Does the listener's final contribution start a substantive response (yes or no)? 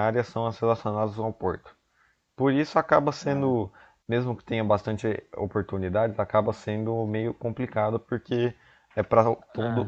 no